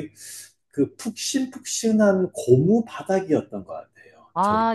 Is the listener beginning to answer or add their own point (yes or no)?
yes